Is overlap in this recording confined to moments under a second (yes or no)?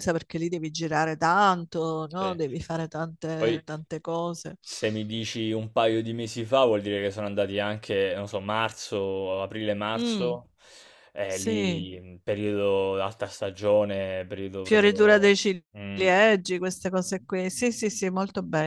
no